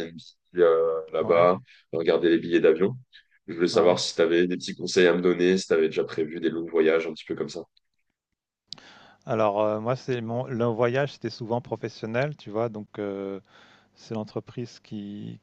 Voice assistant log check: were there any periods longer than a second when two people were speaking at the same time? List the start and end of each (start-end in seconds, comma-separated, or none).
none